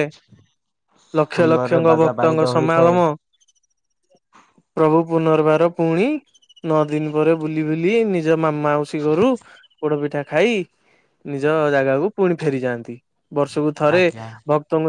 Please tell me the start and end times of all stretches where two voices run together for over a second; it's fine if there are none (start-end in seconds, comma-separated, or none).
1.3-3.0